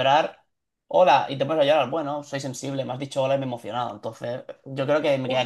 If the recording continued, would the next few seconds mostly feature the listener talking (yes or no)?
yes